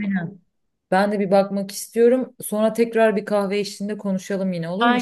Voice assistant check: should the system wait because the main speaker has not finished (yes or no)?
no